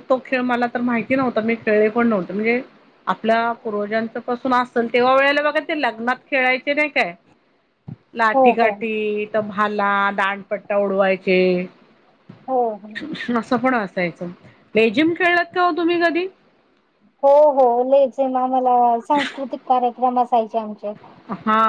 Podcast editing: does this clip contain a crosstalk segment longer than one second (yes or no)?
no